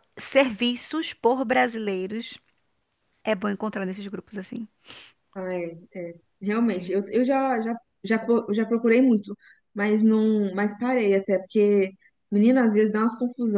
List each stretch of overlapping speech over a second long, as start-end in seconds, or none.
none